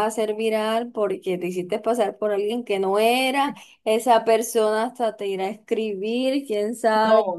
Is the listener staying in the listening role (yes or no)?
yes